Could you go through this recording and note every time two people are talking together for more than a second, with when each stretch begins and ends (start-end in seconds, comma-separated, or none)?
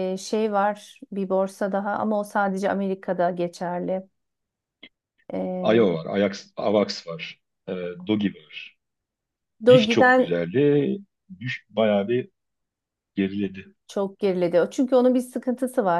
none